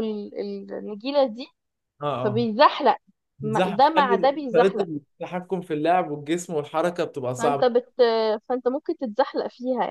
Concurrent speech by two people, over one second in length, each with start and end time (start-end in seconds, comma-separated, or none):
3.4-4.8